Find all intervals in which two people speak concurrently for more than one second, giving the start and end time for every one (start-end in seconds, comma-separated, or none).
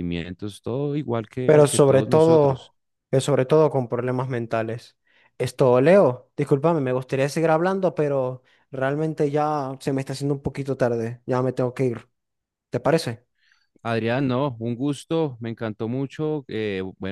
1.4-2.7